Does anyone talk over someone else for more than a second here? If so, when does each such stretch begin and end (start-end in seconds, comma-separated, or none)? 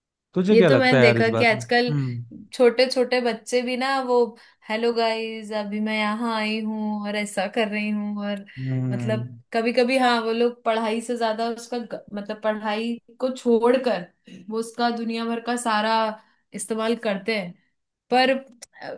0.5-1.9